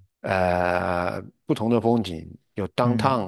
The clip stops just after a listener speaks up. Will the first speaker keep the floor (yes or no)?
no